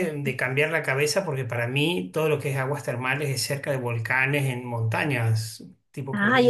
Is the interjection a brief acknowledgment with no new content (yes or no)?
no